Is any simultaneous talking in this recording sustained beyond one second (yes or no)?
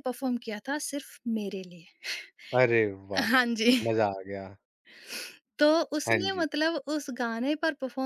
no